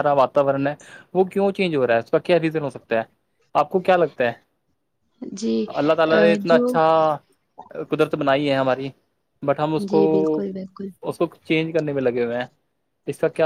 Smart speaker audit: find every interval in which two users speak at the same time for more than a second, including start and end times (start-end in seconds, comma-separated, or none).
none